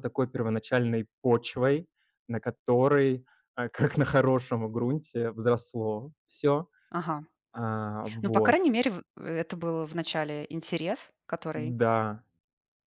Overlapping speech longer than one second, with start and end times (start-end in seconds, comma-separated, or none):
none